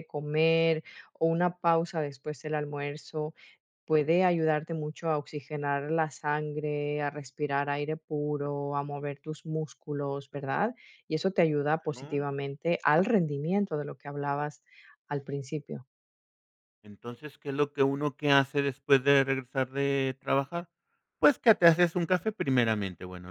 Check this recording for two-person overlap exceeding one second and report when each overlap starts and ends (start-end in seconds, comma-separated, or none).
none